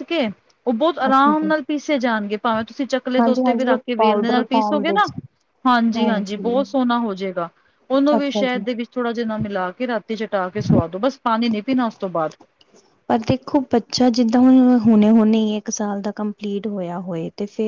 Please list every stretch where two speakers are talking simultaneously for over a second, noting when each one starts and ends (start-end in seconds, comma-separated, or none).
3.2-5.0